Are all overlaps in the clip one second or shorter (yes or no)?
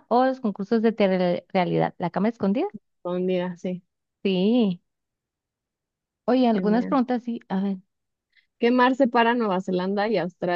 yes